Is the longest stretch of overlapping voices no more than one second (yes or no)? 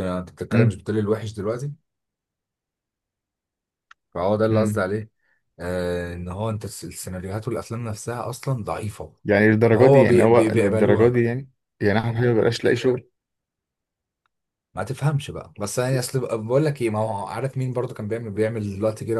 no